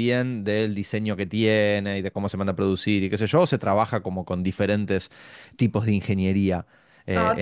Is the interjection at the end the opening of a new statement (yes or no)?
yes